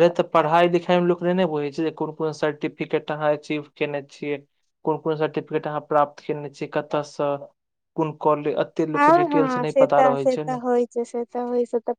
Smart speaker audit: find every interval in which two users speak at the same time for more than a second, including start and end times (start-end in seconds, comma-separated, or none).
8.9-10.6